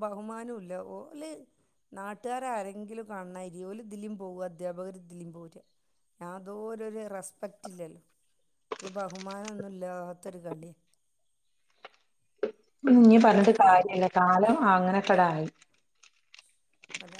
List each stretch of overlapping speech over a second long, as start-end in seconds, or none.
none